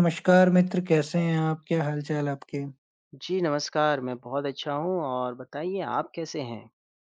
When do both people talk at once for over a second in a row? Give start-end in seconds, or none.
none